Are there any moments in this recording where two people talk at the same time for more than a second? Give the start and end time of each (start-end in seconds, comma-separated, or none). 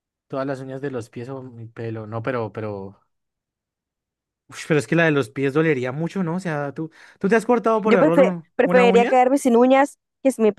7.8-9.1